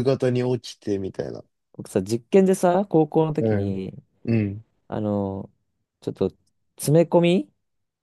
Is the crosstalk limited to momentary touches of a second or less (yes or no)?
yes